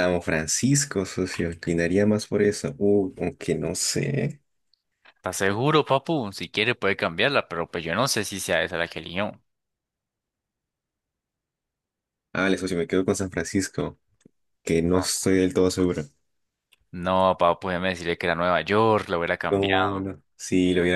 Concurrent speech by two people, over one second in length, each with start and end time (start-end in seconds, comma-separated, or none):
none